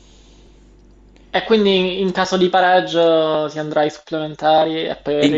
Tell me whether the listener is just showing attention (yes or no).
no